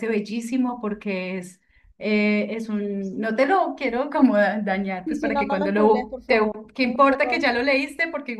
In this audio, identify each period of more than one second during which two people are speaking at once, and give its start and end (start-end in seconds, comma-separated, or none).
5.0-7.5